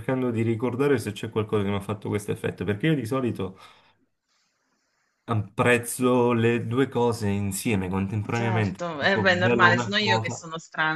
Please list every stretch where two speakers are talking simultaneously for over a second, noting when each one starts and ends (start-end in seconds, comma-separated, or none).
8.3-10.4